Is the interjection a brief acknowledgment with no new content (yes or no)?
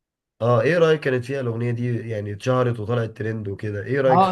no